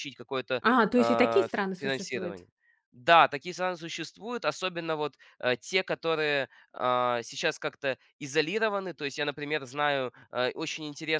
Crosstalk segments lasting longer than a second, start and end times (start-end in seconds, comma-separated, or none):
0.6-2.4